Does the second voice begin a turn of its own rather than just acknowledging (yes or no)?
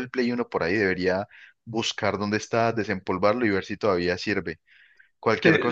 no